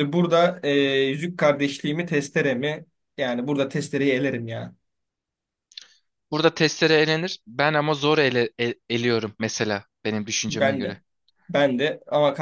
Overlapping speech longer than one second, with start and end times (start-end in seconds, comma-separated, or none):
none